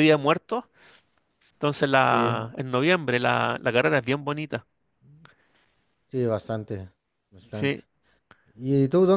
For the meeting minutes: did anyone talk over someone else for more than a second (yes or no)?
no